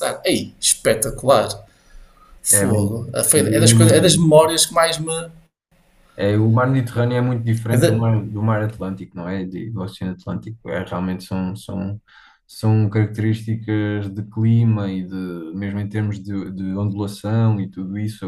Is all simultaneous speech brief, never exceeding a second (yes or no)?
no